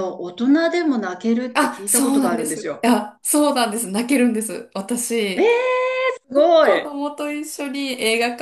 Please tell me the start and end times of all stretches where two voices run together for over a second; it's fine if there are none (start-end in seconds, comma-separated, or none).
1.5-2.9